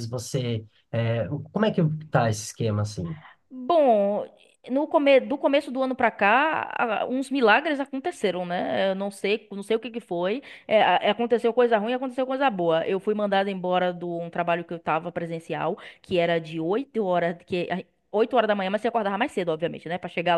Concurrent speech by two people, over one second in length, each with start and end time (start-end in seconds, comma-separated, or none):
none